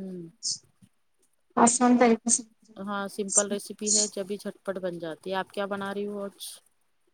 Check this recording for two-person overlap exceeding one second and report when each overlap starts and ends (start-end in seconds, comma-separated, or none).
2.9-4.2